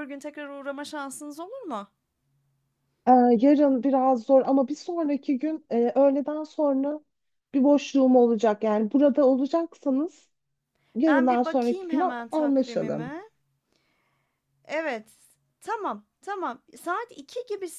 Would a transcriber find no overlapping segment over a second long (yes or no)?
no